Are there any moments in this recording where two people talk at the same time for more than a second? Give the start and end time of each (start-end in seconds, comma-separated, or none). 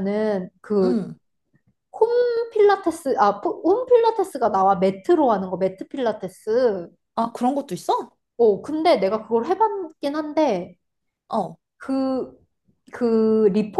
none